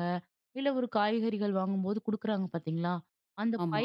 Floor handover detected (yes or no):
no